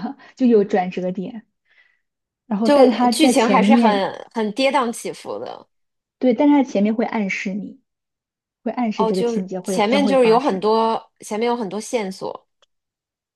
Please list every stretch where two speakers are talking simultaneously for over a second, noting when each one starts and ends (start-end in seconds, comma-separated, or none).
2.6-4.1, 8.9-10.6